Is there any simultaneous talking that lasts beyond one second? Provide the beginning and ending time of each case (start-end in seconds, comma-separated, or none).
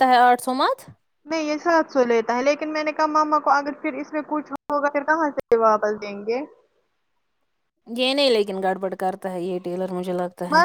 none